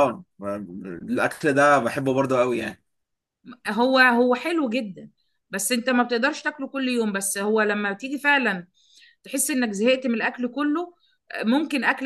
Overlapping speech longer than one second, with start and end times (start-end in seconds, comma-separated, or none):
none